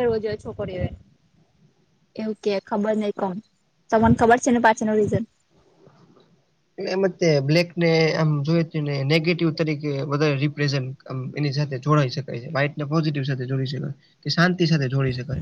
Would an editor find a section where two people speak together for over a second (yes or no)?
no